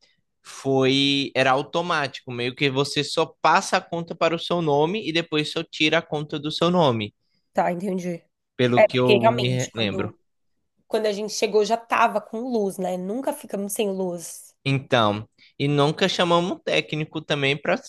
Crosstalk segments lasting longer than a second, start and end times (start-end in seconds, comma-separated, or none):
8.7-10.1